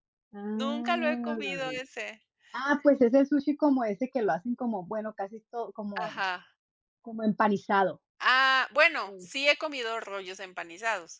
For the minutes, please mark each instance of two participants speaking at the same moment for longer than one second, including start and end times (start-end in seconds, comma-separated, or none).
0.5-1.8